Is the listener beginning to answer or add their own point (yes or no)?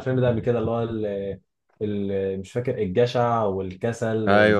yes